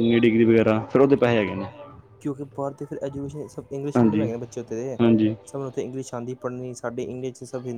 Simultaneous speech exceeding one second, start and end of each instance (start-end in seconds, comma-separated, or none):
none